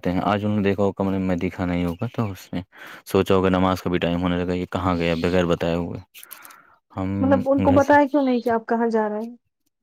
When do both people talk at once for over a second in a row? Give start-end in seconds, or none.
none